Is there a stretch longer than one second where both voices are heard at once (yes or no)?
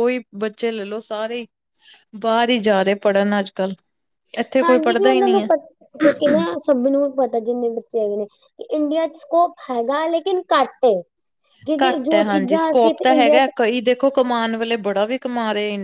yes